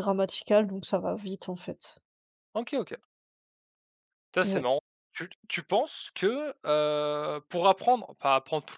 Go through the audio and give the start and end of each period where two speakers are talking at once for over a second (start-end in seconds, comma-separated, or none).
none